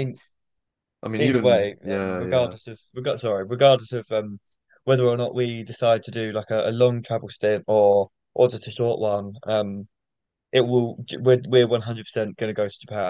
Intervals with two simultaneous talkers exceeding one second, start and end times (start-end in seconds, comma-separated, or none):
1.2-2.5